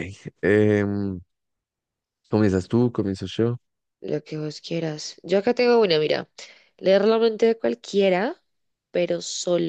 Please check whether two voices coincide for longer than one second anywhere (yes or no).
no